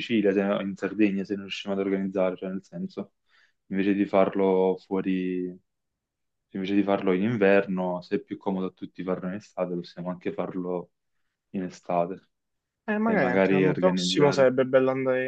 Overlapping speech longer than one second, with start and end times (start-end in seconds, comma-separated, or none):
13.0-14.6